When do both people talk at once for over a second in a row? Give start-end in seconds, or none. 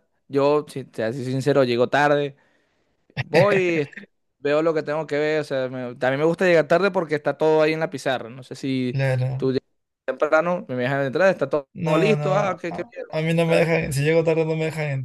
11.7-13.7